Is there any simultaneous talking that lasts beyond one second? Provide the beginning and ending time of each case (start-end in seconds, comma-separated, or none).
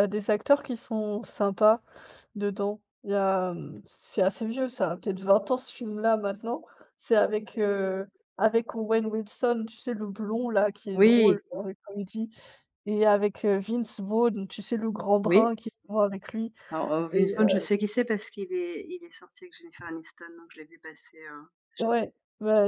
none